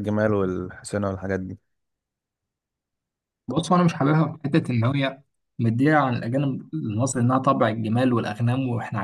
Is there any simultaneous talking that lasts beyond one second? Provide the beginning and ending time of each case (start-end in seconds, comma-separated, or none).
none